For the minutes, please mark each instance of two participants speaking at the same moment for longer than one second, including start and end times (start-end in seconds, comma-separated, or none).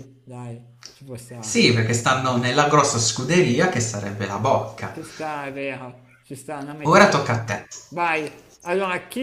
none